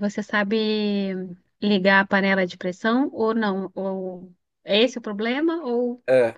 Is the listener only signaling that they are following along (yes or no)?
no